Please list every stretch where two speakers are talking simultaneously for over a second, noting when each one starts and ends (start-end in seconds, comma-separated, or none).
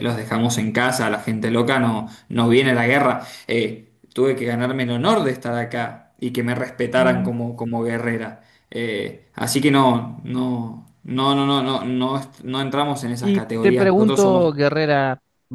13.2-14.5